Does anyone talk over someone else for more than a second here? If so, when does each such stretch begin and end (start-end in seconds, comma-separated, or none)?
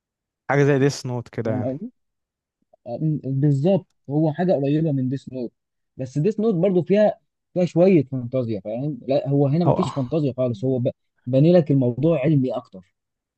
none